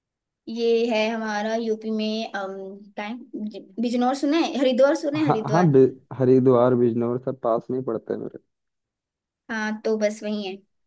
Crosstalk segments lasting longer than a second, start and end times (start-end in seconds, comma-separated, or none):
none